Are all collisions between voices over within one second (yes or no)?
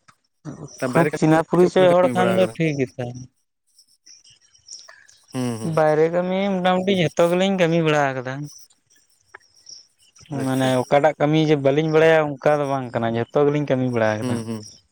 no